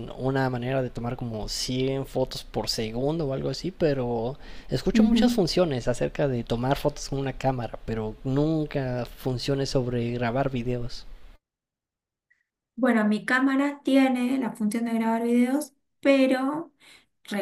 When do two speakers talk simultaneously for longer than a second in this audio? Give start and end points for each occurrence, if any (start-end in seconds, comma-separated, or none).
none